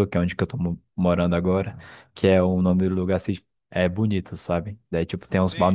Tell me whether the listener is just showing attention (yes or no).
yes